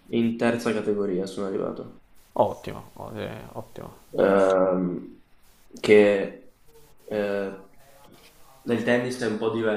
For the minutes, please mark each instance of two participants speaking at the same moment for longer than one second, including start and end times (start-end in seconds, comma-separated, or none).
none